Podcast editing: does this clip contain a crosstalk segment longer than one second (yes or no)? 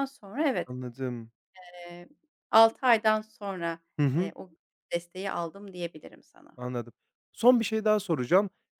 no